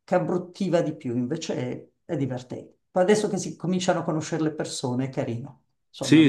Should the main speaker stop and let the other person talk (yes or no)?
yes